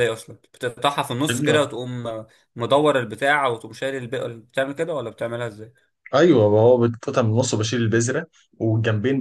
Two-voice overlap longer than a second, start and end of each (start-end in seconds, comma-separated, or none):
none